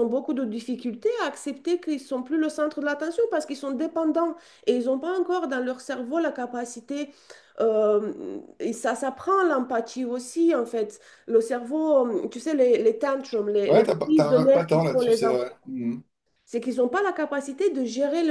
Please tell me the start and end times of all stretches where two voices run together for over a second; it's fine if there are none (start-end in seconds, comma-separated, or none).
13.7-15.5